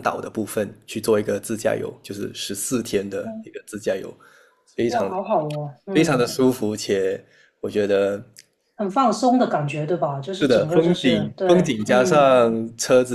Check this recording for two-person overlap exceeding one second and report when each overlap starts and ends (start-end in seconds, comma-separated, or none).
10.4-12.3